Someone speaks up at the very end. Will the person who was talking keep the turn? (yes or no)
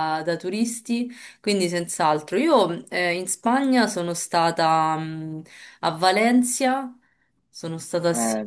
no